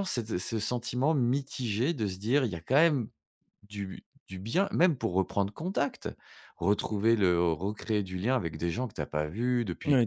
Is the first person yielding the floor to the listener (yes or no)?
yes